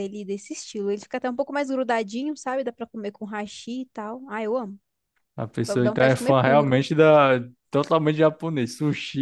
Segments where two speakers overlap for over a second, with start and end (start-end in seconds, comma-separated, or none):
5.7-6.8